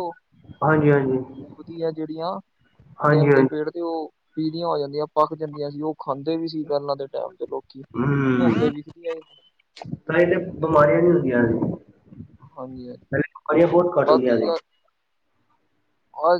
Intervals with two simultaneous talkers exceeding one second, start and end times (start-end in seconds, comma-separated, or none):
none